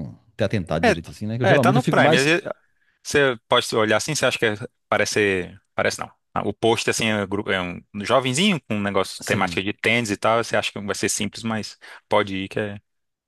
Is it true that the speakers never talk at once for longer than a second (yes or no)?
no